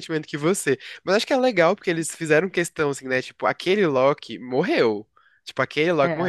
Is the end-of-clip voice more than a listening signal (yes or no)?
no